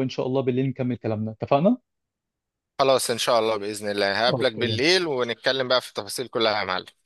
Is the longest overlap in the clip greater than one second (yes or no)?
no